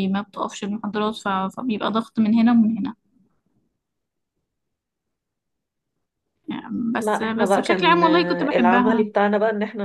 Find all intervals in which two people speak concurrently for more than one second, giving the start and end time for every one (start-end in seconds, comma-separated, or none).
7.0-9.1